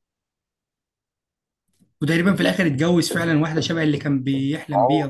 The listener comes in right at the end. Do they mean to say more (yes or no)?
yes